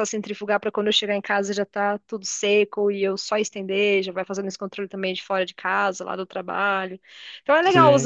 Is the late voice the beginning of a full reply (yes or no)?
no